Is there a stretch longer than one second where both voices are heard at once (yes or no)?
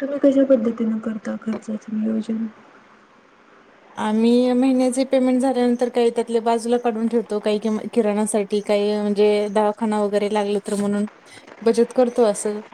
no